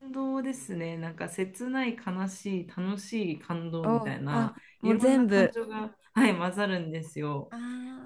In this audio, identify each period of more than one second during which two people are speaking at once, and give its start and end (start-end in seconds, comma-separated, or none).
3.8-5.5